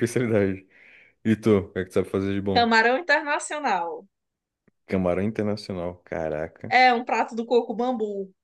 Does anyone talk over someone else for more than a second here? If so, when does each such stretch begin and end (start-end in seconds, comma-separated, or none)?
none